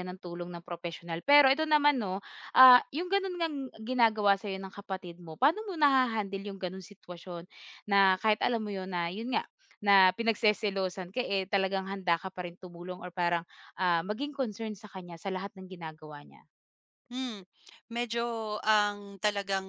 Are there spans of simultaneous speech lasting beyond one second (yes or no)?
no